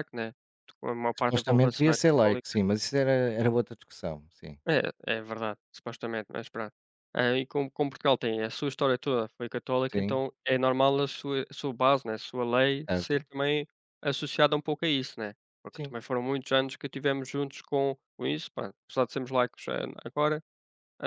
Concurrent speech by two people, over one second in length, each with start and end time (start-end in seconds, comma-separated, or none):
1.2-2.5